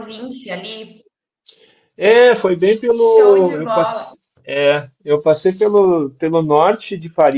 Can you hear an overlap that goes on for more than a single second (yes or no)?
yes